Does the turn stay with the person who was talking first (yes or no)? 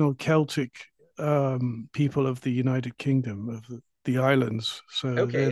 no